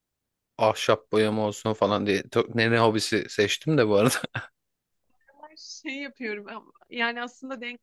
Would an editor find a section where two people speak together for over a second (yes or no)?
no